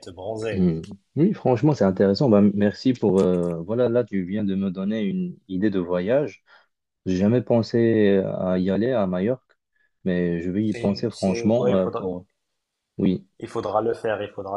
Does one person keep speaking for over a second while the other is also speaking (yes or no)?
yes